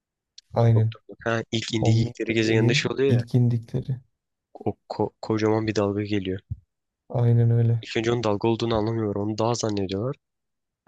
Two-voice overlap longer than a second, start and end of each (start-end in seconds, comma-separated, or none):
1.8-3.2